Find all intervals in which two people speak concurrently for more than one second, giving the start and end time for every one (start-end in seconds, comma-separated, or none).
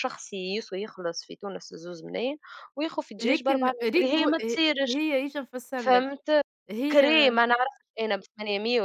3.2-5.0